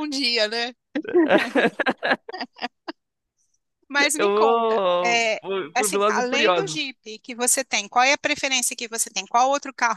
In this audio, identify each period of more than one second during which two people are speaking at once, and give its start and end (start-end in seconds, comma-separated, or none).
4.2-7.0